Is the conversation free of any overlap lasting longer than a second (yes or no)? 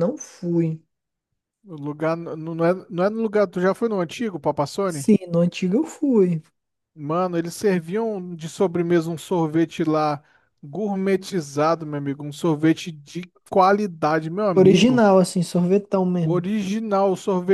yes